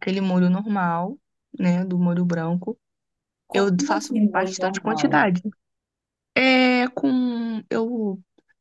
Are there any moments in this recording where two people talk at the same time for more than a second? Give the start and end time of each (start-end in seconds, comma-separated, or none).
3.5-5.3